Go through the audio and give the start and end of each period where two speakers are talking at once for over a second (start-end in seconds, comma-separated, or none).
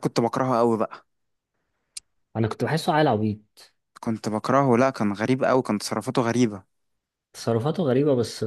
none